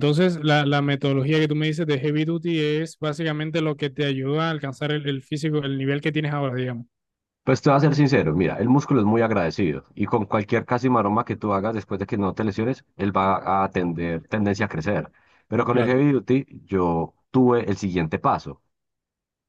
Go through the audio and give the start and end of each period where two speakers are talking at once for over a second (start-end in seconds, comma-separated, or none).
none